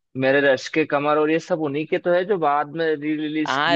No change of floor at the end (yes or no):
no